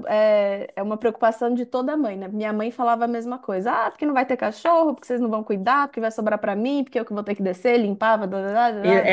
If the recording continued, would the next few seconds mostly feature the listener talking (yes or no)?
yes